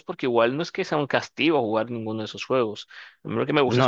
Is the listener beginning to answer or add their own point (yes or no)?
no